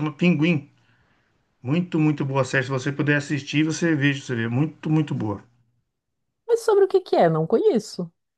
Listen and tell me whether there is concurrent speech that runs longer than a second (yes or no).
no